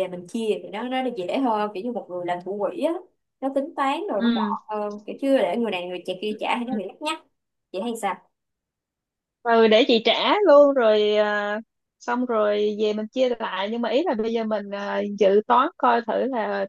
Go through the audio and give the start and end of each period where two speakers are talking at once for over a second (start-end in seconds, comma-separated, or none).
none